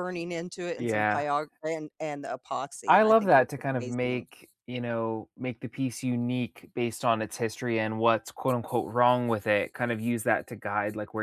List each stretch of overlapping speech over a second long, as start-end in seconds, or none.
2.9-4.3